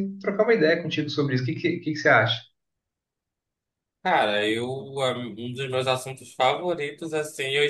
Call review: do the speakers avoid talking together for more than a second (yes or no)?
yes